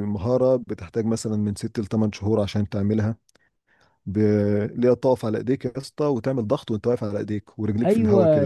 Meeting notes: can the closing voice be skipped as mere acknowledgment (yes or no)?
no